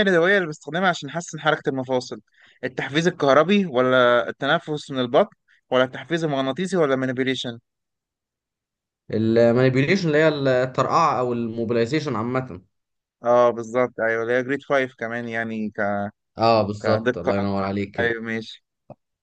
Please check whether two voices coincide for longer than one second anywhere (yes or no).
yes